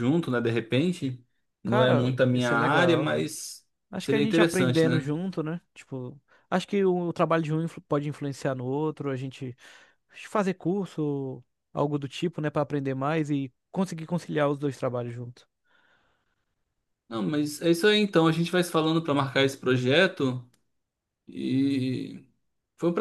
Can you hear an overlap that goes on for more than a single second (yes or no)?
yes